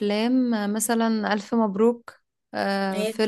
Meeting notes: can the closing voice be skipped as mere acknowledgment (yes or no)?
yes